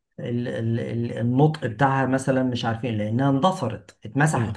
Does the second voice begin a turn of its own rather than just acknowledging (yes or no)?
no